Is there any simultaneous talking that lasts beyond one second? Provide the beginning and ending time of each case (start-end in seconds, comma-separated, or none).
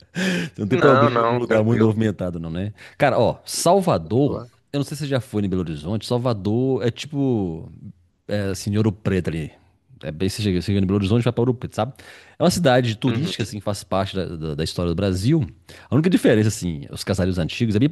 0.7-2.0